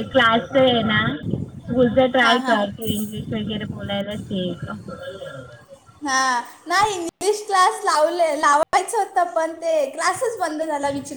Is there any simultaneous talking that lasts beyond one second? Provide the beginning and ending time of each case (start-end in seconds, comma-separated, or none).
none